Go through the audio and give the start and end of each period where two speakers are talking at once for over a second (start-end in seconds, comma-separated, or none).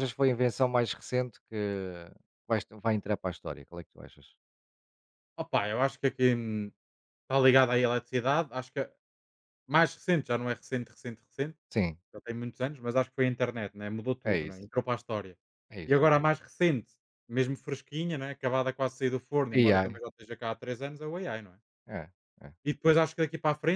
none